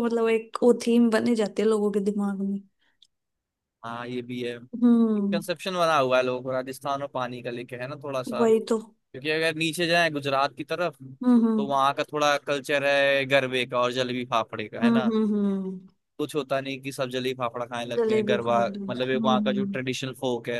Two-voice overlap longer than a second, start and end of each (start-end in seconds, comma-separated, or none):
18.0-19.7